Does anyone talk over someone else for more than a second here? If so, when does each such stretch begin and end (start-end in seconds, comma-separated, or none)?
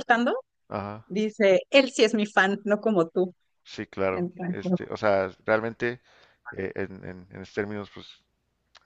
none